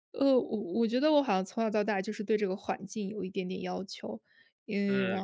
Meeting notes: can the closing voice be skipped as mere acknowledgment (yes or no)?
no